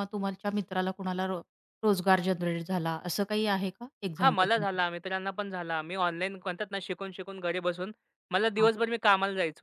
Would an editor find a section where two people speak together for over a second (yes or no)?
no